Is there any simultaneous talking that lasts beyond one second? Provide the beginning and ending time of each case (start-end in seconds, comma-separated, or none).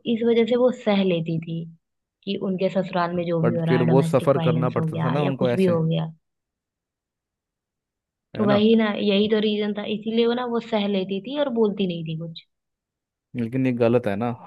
3.4-5.8